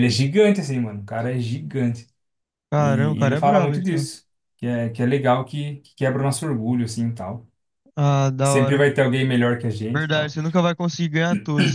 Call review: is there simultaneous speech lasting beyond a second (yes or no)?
yes